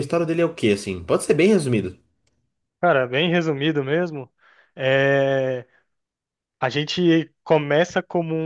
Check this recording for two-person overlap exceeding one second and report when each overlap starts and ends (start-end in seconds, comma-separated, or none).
none